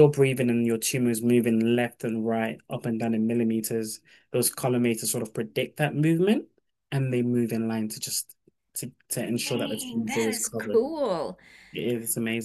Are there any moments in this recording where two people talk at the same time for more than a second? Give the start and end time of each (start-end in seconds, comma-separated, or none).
9.4-10.8